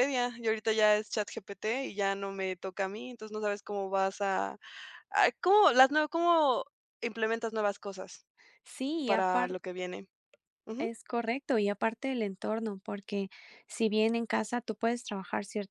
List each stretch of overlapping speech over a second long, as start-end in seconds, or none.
none